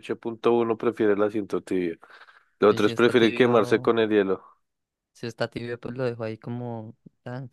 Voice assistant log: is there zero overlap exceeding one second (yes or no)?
no